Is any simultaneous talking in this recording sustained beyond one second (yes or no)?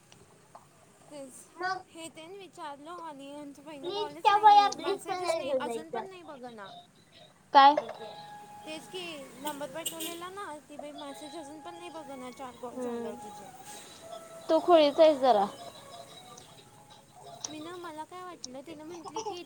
yes